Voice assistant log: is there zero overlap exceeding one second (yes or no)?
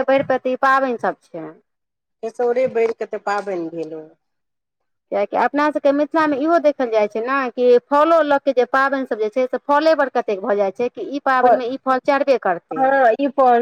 yes